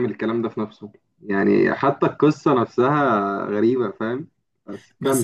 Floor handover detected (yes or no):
yes